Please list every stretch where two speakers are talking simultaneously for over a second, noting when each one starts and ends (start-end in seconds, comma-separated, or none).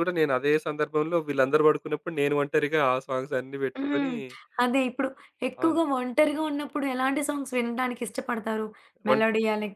none